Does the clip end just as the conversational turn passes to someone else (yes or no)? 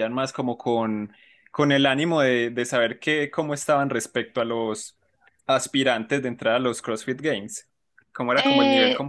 yes